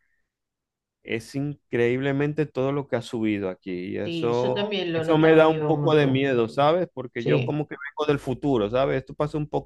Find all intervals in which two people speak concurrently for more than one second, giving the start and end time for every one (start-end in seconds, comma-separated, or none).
4.0-6.3